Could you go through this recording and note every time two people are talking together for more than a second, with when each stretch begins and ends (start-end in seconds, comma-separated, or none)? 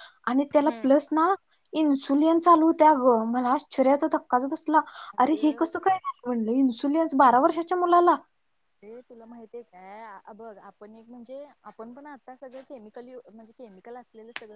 none